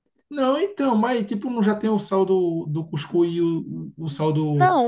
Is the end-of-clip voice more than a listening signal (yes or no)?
yes